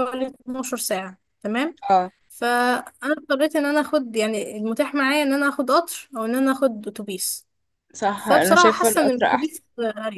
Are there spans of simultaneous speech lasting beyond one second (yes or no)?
yes